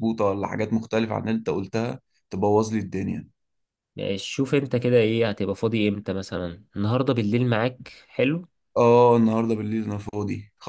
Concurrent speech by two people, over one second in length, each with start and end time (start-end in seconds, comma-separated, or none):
none